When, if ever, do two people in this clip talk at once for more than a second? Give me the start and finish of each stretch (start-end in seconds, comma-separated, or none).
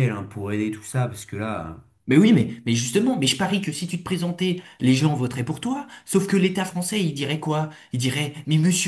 none